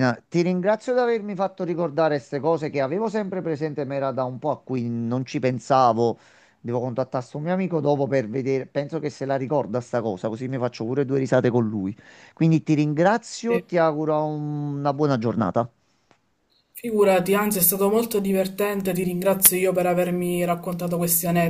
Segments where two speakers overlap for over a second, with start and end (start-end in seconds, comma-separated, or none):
none